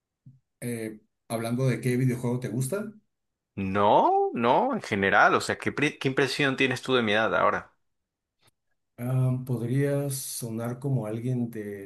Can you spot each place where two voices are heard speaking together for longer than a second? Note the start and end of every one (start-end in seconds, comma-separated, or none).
none